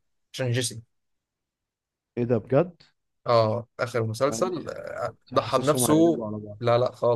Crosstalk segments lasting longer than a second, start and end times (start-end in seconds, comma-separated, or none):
4.3-6.6